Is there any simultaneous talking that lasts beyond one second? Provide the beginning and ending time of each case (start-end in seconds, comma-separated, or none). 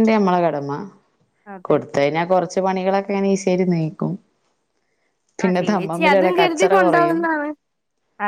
5.4-7.2